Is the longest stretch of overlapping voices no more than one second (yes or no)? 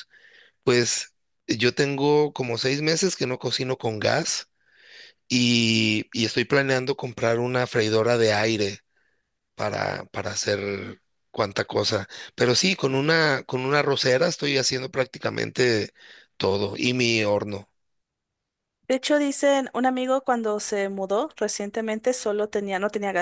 yes